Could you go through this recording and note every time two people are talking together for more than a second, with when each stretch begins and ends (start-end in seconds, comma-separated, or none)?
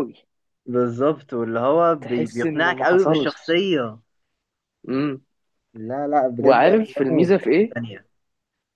2.0-3.5, 6.4-7.8